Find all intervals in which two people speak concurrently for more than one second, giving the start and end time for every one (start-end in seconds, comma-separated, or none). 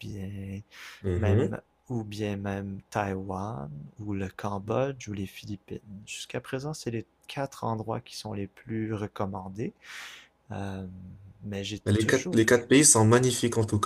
none